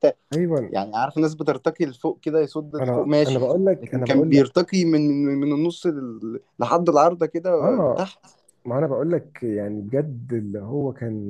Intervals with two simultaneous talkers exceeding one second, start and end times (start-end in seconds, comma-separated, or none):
2.8-4.5